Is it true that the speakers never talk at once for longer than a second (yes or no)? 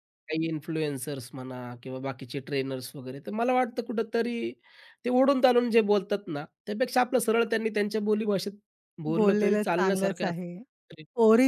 no